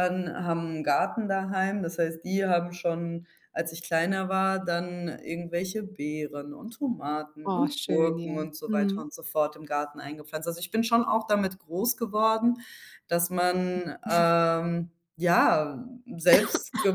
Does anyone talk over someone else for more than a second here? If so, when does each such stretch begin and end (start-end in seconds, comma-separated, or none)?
7.5-9.1